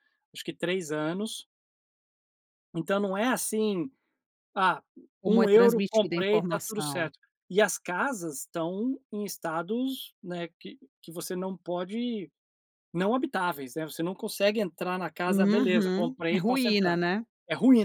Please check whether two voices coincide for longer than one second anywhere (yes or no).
yes